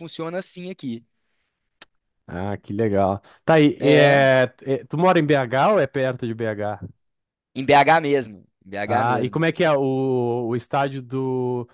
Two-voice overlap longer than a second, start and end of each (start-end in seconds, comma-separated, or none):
none